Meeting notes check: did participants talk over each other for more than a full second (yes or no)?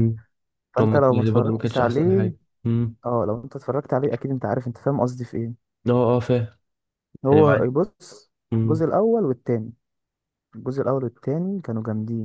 yes